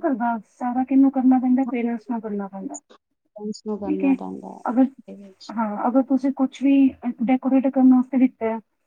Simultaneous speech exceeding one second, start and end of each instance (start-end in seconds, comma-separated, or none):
none